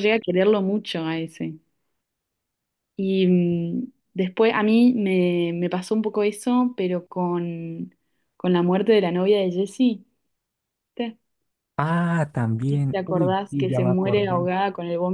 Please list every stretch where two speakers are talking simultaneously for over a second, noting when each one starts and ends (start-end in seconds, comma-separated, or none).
12.9-14.5